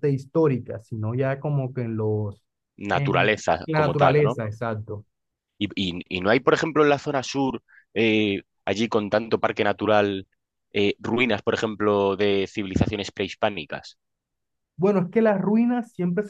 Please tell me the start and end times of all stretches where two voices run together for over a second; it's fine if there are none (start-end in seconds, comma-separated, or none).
2.9-4.4